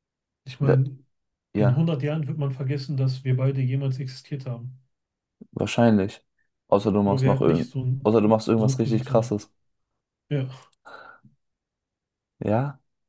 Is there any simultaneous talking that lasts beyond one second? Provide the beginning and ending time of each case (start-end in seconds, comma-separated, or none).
7.0-9.4